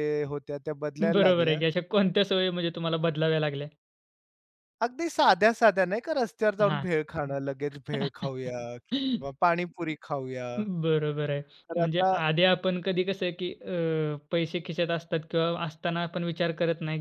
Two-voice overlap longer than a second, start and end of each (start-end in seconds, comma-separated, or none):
none